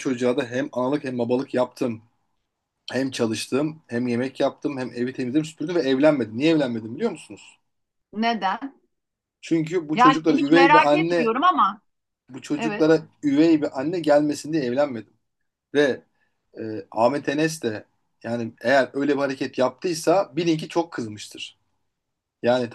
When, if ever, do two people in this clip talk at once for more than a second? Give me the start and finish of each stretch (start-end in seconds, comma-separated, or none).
9.9-11.3